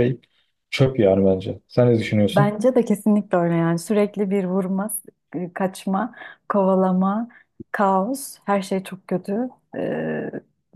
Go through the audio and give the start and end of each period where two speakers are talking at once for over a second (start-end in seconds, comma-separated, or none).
none